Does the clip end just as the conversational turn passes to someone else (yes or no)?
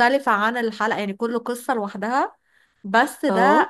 no